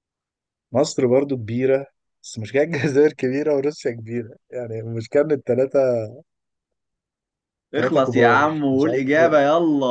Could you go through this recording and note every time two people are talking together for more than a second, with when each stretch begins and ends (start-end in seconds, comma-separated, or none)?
7.7-9.4